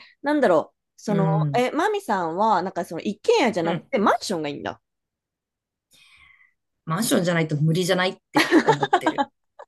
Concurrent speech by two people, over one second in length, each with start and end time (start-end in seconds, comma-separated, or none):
none